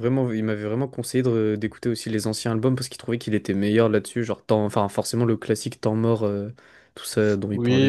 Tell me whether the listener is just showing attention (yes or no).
no